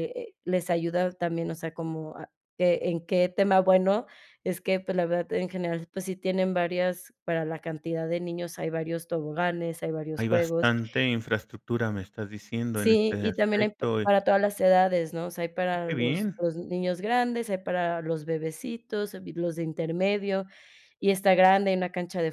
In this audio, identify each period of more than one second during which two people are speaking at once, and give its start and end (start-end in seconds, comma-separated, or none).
12.7-14.1